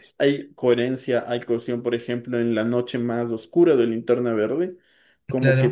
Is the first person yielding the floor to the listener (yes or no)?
no